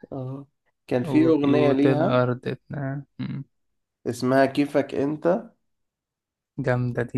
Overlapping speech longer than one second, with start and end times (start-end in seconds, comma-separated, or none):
1.0-2.3